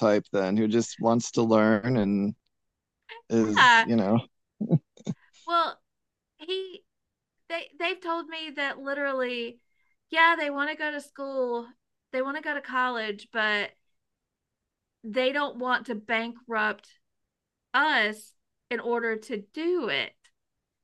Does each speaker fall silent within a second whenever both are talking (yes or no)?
yes